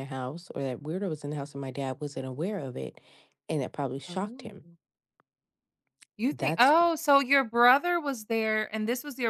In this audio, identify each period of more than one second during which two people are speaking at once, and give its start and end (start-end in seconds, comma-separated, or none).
none